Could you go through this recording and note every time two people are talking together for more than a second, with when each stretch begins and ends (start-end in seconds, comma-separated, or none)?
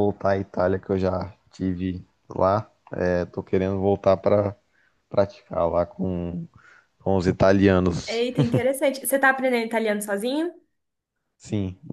none